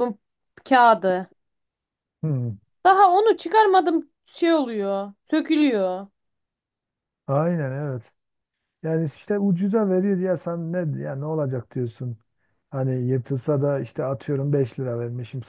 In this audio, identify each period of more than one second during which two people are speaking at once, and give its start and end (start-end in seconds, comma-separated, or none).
none